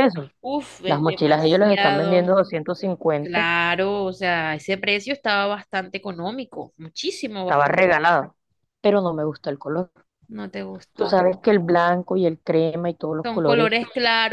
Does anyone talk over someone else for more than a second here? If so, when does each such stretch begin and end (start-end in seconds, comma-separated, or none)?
0.8-2.4